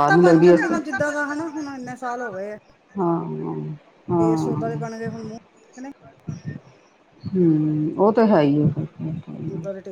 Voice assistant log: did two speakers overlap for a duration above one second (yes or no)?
no